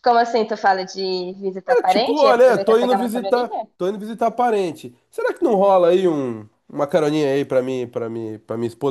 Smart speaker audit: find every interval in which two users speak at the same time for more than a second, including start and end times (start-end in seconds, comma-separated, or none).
1.7-3.7